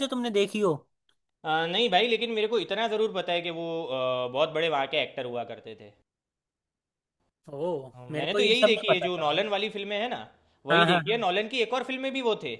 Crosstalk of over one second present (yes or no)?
yes